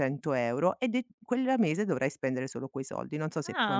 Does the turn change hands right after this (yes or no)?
yes